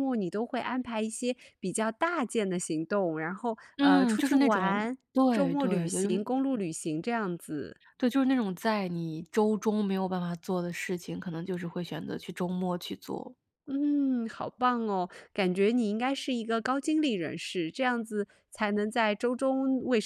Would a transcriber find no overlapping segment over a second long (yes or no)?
no